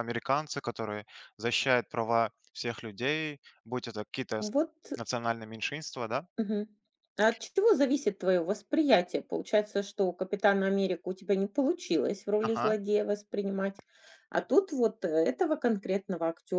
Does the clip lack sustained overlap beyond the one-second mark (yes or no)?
yes